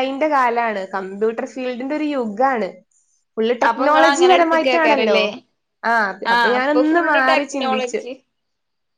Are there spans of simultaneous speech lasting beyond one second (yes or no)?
yes